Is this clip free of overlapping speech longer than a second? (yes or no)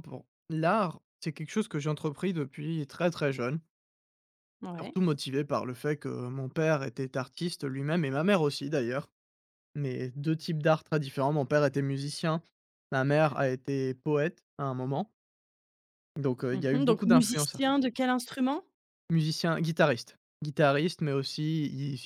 no